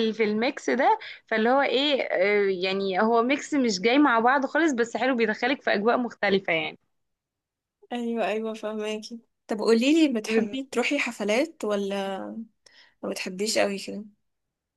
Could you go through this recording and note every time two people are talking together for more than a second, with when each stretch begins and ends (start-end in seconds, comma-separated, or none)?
none